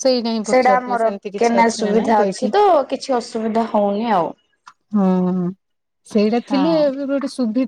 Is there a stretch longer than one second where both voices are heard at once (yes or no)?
yes